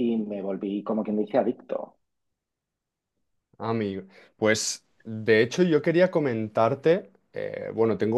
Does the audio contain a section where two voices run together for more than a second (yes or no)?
no